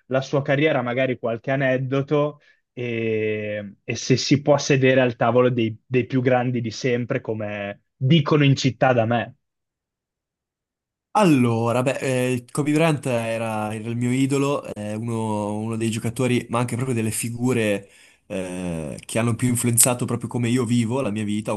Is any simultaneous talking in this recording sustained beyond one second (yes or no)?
no